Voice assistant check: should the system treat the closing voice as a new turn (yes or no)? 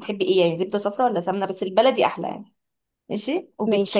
no